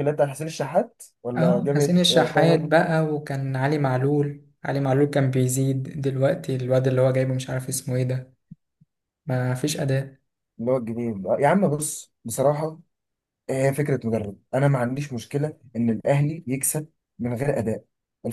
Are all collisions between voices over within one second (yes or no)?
no